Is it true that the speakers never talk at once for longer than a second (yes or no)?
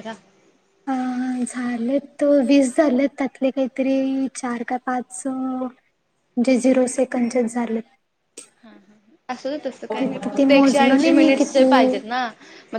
no